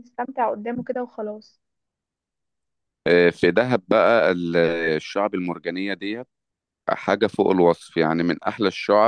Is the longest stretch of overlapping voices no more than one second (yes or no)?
yes